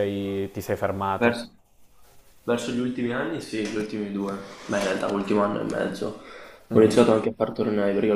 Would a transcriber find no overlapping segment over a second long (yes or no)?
yes